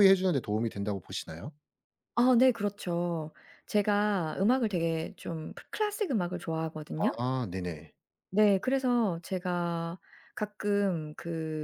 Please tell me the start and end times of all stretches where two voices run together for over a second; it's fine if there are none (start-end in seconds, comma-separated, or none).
none